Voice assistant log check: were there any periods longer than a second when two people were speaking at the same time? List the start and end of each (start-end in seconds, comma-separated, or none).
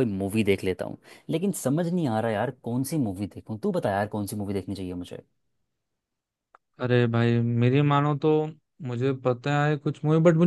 none